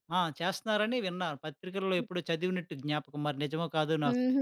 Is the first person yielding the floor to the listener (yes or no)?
yes